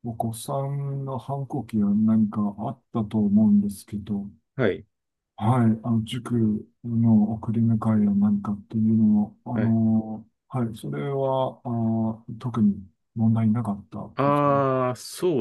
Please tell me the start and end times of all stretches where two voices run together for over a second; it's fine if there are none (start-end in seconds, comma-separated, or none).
none